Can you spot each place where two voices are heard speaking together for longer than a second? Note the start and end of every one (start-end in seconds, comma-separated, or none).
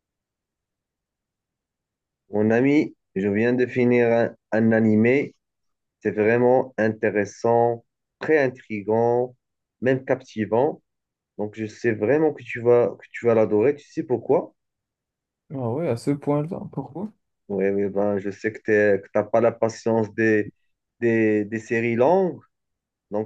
none